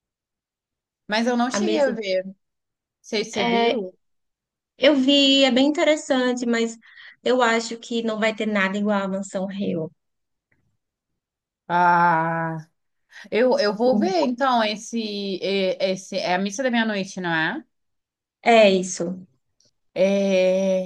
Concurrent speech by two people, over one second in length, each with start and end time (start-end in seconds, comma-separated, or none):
none